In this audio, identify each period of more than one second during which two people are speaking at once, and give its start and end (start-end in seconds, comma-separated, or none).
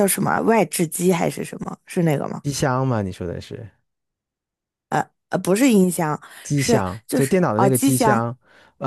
6.5-8.3